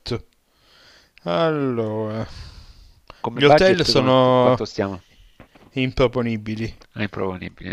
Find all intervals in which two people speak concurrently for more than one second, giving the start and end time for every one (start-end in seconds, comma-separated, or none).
3.3-4.7